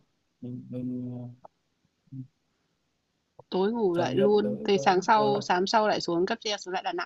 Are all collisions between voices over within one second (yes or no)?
no